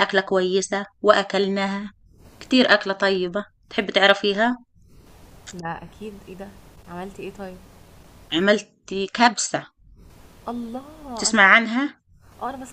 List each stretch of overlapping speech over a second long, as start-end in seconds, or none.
none